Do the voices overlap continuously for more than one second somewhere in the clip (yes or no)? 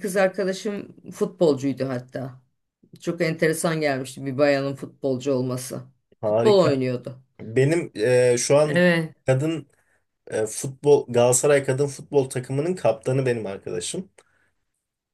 no